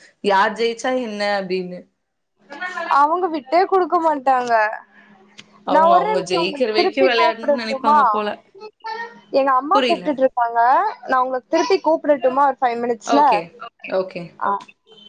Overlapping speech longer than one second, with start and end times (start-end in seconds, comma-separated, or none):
5.7-8.0